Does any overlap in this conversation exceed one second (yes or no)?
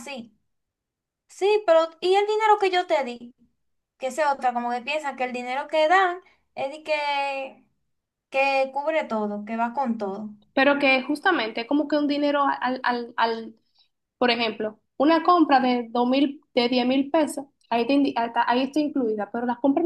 no